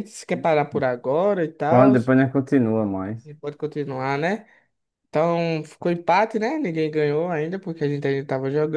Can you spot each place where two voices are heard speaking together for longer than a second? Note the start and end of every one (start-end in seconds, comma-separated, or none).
none